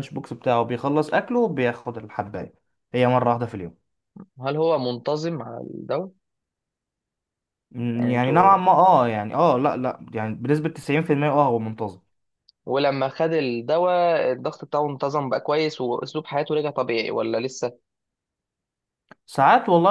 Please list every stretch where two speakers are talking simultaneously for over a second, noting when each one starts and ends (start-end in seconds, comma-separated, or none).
none